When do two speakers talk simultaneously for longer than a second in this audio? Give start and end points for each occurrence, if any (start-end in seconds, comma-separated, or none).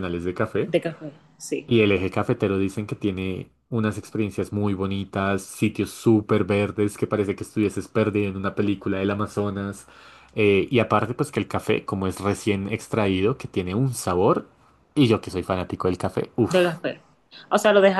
none